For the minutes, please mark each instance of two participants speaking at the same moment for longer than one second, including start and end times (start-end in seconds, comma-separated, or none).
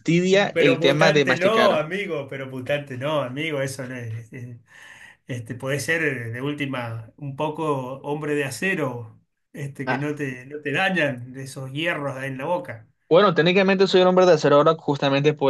0.5-1.9